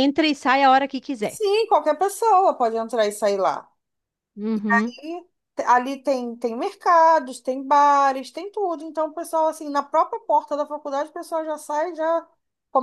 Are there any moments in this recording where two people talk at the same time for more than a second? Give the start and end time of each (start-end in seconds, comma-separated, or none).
none